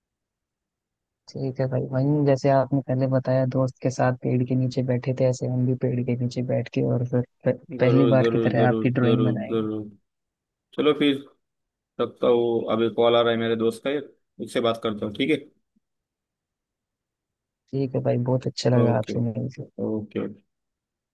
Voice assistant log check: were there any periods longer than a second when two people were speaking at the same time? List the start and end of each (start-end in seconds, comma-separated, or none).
7.8-9.7